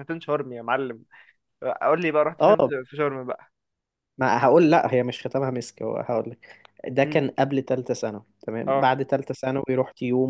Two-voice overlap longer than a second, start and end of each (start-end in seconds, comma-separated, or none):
none